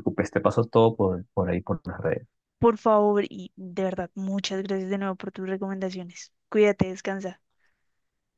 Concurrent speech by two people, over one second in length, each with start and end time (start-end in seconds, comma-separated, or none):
none